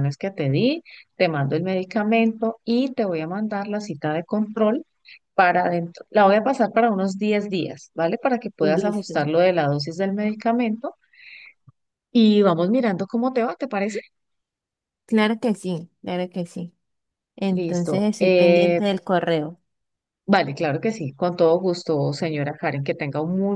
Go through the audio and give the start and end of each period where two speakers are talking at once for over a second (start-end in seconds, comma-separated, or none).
17.5-18.8